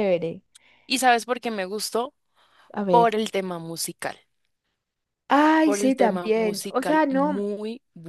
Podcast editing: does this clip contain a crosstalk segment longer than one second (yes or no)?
yes